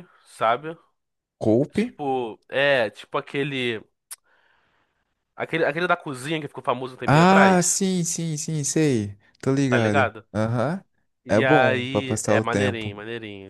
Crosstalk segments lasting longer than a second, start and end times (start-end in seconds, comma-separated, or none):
11.3-13.0